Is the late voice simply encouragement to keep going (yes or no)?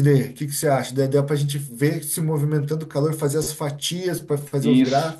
no